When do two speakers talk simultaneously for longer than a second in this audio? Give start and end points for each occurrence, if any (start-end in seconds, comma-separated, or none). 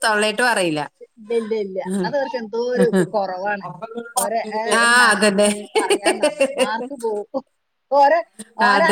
4.2-5.5